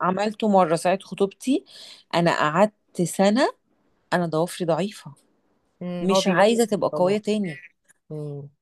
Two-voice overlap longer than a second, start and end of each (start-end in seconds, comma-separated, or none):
6.0-7.2